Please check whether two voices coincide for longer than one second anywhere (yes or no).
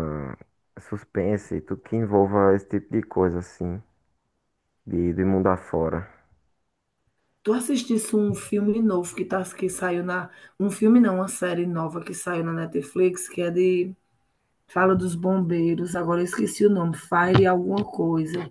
no